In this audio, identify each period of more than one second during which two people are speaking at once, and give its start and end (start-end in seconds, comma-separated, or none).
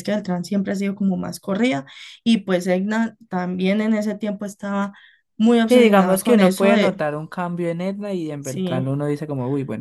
5.7-7.1